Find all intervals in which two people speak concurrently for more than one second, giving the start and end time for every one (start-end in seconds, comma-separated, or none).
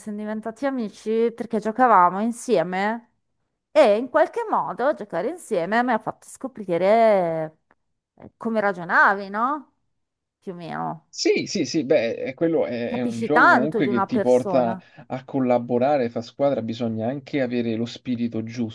12.8-14.8